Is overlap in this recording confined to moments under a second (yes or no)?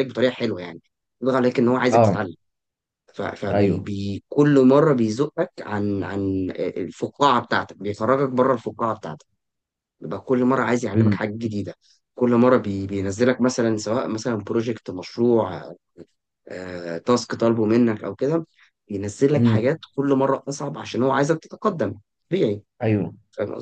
yes